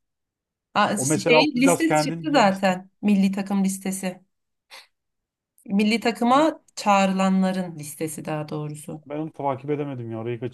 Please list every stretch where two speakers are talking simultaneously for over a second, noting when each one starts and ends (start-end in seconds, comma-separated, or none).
0.9-2.8